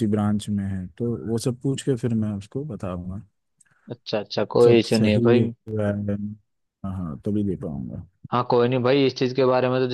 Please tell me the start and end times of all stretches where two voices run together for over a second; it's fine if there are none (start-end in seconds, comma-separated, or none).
none